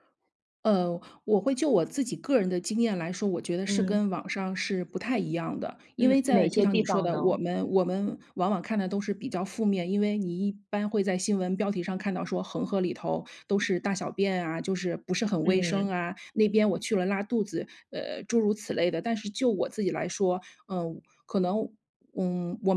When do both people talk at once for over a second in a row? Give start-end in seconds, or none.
6.0-7.4